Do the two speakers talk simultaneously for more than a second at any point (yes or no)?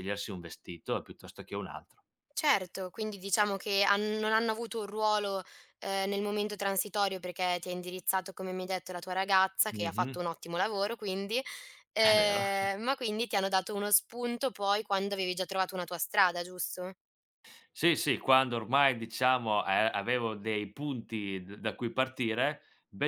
no